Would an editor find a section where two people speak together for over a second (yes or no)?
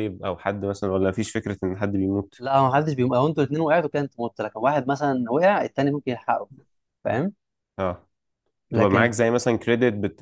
no